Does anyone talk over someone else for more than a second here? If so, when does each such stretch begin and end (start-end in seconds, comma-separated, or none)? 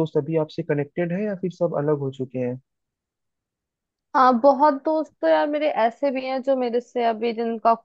none